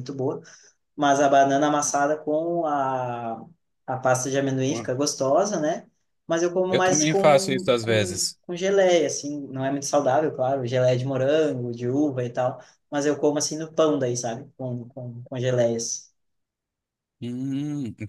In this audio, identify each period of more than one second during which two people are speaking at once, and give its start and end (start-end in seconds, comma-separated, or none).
6.7-8.4